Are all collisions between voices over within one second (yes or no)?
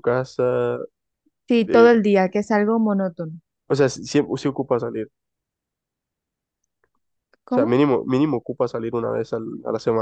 yes